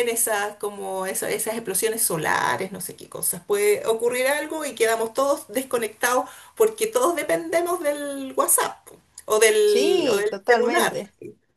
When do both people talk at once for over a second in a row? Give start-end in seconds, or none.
9.6-11.0